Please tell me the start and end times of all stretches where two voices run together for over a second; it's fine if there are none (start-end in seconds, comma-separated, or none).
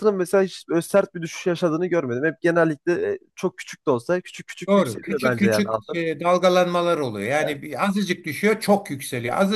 4.7-6.0